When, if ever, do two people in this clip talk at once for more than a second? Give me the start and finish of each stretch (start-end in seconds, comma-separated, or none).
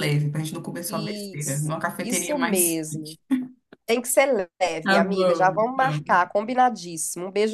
0.9-3.2, 4.8-6.2